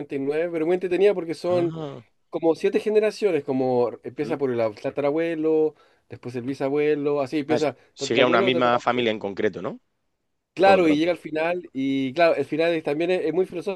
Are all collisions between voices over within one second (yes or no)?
no